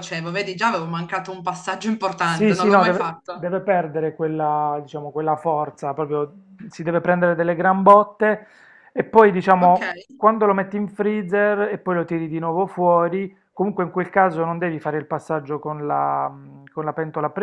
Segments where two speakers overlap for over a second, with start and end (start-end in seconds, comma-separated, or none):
2.2-3.5